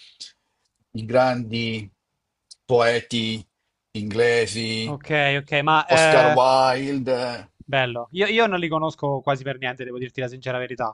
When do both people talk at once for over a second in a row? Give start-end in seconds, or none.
none